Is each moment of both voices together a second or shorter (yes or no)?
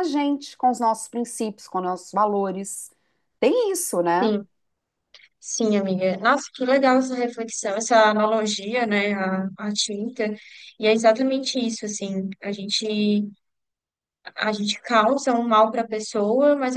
yes